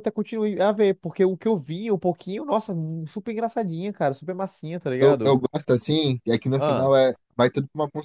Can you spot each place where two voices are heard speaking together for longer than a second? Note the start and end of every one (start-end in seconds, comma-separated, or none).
none